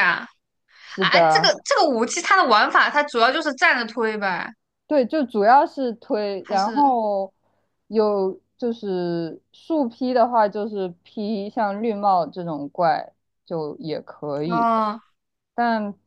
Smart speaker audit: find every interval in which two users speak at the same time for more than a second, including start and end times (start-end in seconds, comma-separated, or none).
none